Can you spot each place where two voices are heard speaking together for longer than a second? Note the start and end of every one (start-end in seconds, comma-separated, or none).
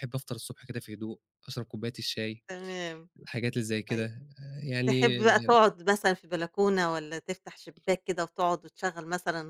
none